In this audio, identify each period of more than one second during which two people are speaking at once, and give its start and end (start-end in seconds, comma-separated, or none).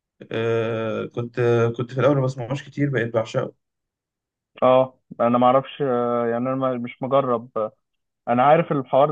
none